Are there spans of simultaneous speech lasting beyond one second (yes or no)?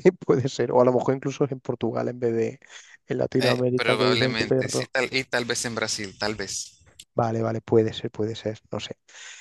yes